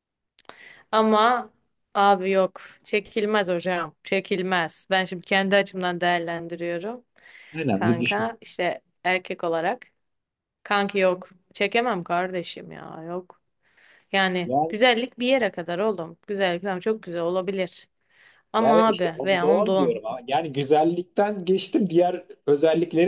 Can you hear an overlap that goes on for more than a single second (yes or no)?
yes